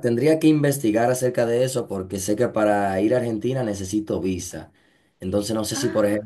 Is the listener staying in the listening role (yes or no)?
yes